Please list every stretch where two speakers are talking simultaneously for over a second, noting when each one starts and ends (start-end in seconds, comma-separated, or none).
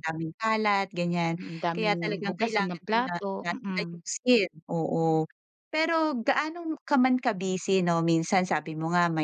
1.4-4.0